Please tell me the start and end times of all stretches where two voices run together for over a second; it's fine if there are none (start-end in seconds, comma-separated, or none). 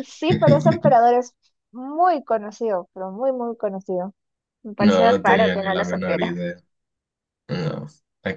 4.8-6.3